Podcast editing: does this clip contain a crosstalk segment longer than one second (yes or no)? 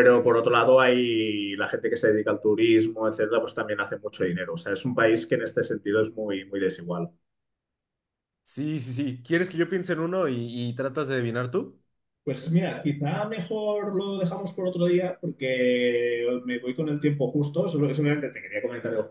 no